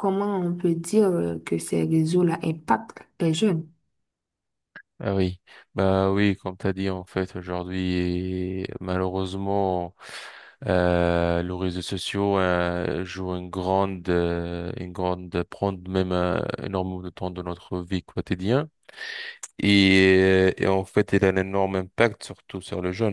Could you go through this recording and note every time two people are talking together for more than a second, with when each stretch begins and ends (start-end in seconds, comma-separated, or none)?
none